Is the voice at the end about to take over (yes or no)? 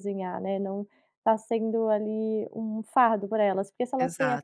no